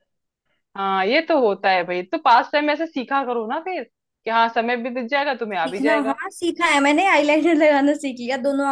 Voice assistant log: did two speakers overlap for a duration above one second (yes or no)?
no